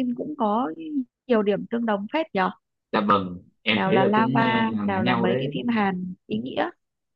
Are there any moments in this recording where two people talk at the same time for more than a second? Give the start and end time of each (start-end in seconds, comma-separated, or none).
3.7-5.6